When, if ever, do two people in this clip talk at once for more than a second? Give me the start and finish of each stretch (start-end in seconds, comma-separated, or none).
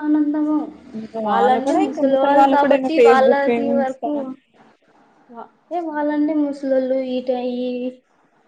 none